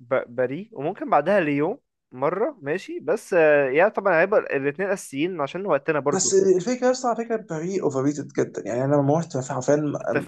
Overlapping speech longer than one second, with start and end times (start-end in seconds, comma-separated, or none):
none